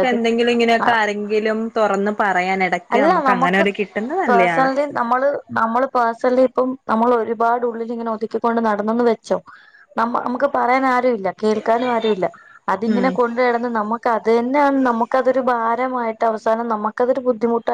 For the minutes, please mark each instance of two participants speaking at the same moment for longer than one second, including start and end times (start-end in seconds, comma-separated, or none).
none